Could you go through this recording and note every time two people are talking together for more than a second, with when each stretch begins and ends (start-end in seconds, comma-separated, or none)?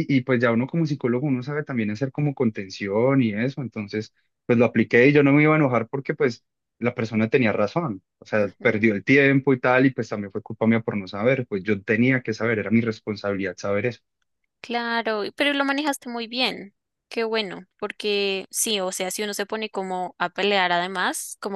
none